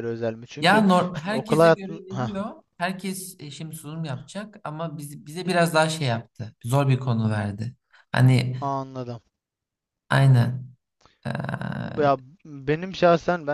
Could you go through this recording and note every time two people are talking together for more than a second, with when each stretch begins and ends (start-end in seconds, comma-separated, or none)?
0.6-2.3